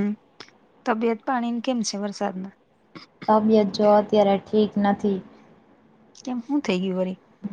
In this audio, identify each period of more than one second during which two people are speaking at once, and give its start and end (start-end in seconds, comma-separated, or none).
none